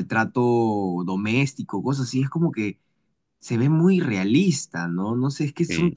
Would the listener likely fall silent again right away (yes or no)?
yes